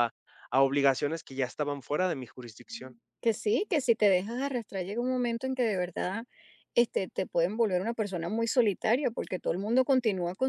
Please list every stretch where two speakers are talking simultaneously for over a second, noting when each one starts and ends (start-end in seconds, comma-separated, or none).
none